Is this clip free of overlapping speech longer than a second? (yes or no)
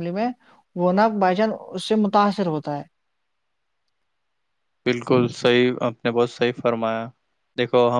yes